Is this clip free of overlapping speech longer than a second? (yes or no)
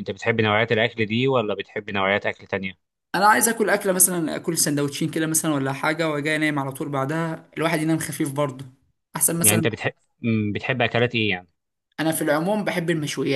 yes